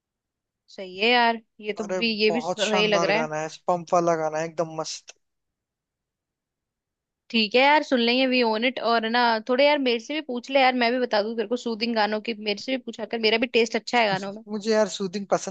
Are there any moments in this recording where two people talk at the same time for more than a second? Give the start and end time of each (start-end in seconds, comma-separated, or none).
1.8-3.3